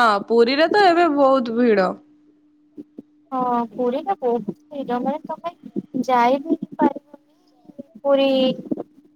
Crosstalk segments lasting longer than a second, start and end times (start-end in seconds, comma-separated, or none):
none